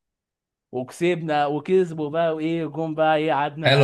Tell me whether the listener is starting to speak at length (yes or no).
yes